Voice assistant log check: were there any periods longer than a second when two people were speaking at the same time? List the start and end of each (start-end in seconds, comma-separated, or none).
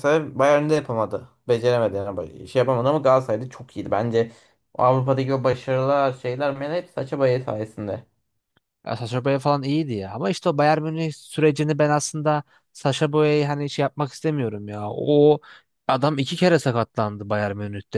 none